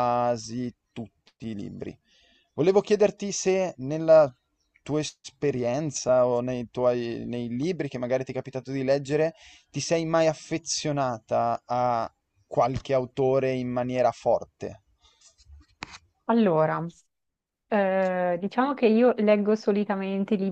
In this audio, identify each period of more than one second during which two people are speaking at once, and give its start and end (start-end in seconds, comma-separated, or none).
none